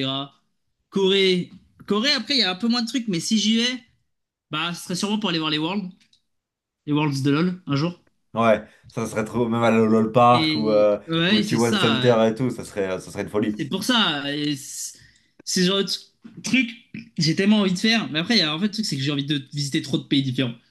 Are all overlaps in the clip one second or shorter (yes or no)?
no